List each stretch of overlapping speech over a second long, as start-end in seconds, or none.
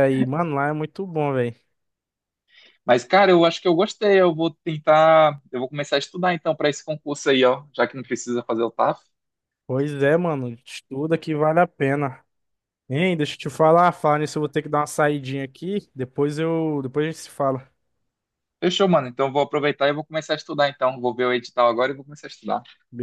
none